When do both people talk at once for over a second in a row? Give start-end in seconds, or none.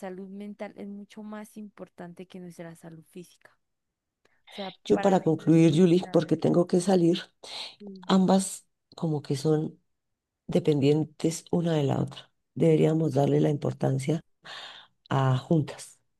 4.8-6.3